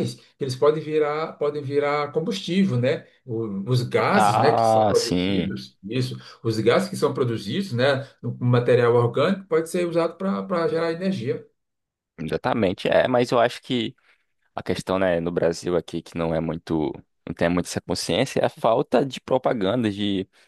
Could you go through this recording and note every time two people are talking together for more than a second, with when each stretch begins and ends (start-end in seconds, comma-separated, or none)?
4.1-5.5